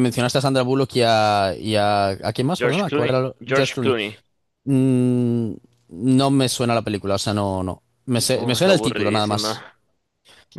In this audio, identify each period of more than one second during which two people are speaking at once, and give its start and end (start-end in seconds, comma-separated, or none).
2.6-4.0, 8.3-9.6